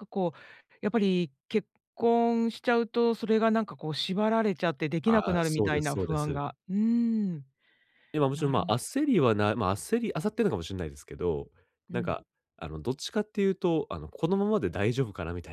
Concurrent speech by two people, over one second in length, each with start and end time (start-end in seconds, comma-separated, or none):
5.0-6.4